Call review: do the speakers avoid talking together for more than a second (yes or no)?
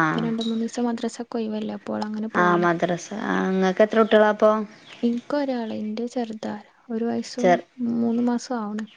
yes